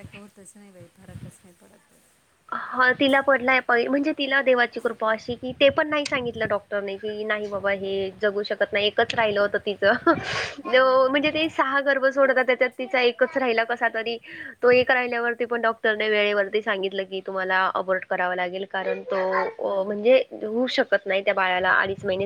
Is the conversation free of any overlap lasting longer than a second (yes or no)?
yes